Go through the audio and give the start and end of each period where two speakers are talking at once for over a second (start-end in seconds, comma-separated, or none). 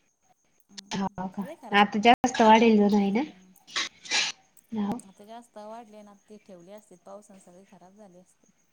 1.6-3.2